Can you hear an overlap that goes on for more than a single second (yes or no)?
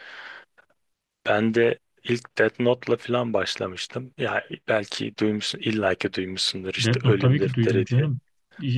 yes